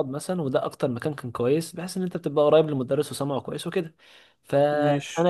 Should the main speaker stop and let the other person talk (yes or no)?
no